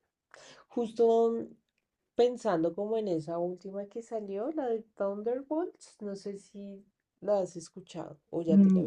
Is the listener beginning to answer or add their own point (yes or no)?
yes